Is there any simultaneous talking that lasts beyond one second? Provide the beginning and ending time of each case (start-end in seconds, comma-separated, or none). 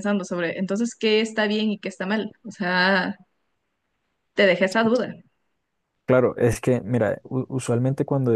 none